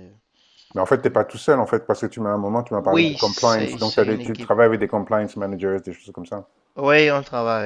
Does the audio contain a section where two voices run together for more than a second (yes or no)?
yes